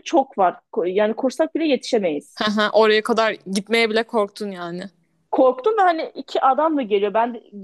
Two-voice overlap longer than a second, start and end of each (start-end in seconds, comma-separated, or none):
none